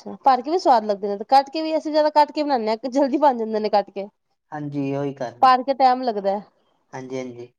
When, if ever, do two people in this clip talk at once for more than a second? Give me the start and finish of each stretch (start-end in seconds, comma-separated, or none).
none